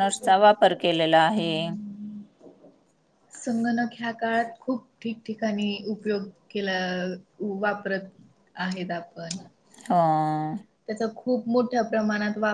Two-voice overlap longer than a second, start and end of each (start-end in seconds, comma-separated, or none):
none